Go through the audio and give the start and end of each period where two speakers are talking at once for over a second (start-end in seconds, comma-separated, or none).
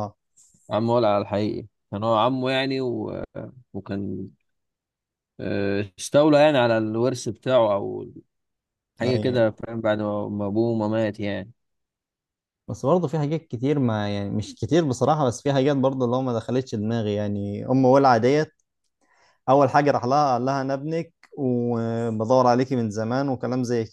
none